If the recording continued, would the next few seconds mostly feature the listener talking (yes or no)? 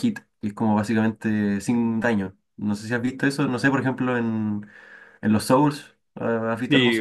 yes